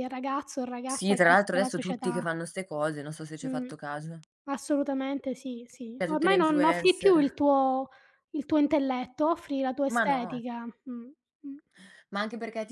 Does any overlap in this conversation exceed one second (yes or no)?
yes